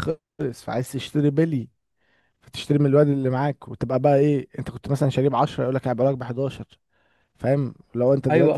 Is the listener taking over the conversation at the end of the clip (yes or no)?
yes